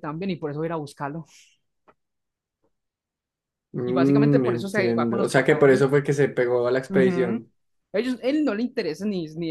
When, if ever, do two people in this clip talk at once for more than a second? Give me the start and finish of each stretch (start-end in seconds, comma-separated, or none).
3.8-5.9